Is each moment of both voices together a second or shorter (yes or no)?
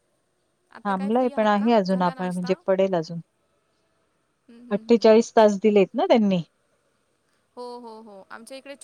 no